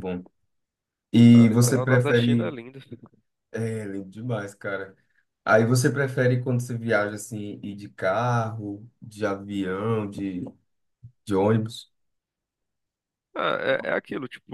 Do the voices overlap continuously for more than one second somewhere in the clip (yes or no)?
yes